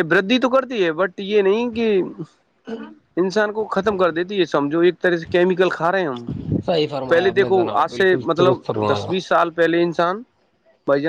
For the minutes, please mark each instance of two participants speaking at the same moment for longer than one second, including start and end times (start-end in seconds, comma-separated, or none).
7.1-9.1